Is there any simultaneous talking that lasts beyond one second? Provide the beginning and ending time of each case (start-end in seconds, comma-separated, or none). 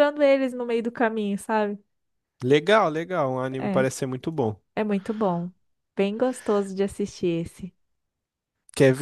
none